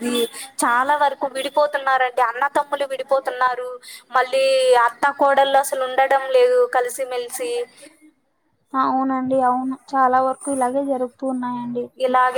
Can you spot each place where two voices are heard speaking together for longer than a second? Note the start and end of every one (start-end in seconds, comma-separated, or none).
none